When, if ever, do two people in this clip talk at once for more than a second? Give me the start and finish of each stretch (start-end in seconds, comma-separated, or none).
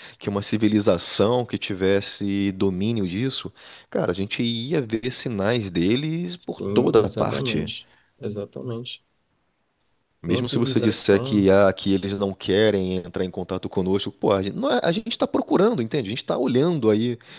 6.4-7.7, 10.3-11.5